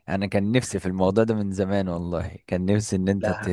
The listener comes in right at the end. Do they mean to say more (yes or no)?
no